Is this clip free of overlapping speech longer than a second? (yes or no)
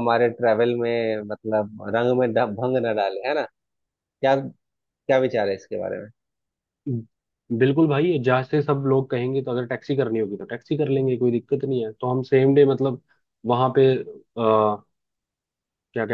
yes